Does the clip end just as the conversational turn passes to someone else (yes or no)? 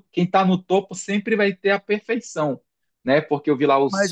no